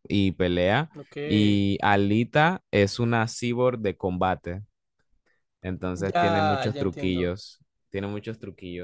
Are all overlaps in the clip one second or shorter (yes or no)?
no